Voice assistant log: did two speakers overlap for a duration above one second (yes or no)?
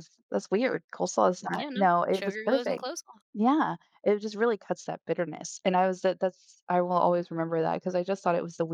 yes